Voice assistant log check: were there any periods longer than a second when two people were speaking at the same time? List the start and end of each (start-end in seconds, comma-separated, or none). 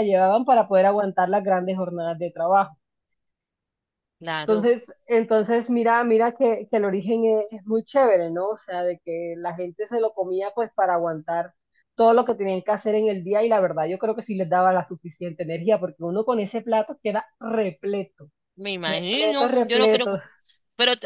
18.9-20.1